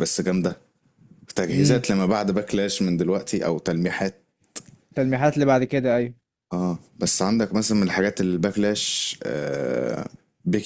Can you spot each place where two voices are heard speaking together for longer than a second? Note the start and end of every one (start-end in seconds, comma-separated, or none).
none